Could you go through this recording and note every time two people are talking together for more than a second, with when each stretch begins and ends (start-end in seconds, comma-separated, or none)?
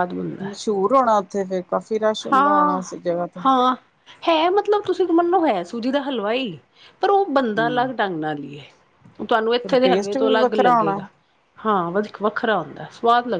9.6-11.0